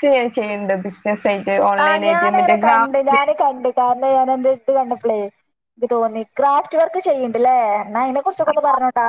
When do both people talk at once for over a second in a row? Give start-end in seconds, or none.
1.8-3.3